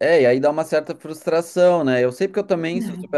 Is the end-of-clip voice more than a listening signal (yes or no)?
no